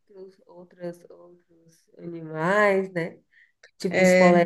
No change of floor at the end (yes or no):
yes